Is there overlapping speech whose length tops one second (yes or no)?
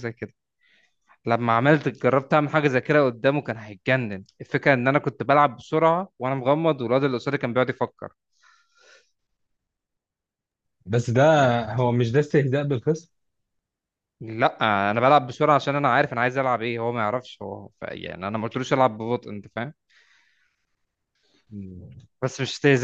no